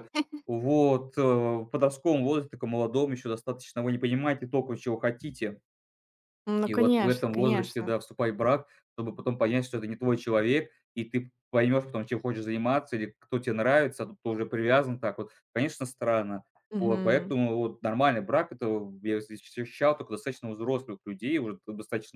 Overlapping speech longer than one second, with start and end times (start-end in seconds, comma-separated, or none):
6.7-7.9